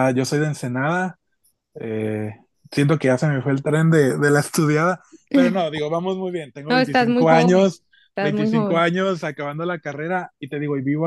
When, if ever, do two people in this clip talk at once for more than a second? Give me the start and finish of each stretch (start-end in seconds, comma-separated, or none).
6.7-8.8